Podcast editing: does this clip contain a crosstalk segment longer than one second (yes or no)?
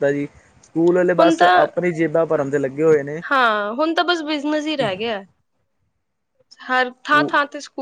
no